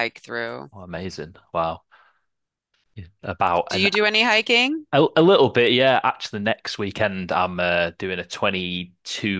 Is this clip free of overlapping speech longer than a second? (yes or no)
yes